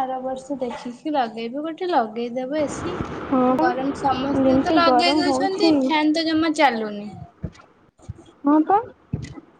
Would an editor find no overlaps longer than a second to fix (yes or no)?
no